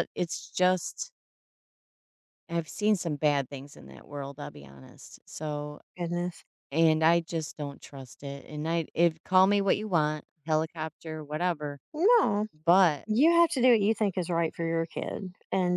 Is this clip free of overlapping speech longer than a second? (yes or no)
yes